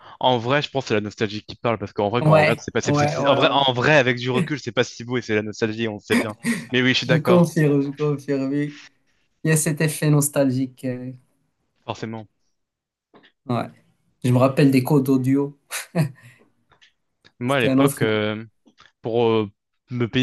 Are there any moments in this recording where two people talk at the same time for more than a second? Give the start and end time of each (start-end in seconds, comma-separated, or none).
2.2-3.7